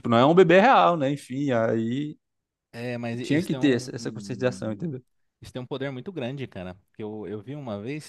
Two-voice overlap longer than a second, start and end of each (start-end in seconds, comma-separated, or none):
3.2-4.9